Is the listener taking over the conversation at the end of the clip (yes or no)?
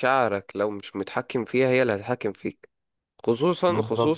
no